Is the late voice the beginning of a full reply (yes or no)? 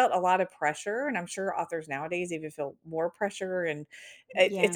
no